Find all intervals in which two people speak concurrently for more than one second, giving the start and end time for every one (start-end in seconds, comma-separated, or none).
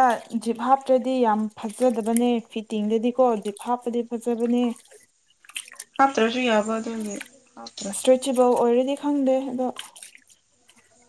none